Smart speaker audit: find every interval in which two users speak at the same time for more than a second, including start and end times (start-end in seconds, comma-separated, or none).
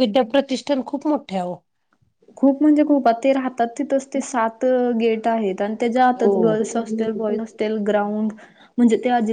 6.2-7.4